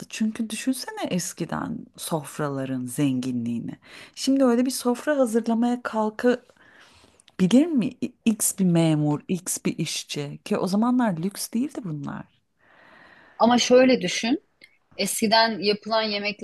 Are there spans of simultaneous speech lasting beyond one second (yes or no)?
no